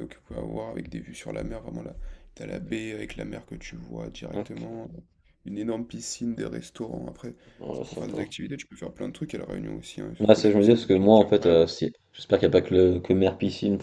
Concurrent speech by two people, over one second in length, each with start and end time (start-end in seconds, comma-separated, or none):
10.2-11.7